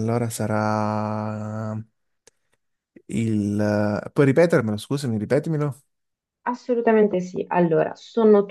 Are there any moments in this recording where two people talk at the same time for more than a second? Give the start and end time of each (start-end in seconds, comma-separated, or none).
none